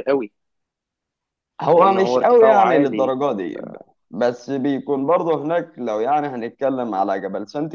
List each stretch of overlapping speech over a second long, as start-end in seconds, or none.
1.7-3.1